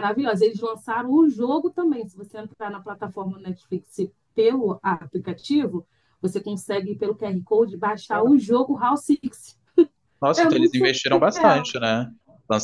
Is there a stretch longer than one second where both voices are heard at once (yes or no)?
yes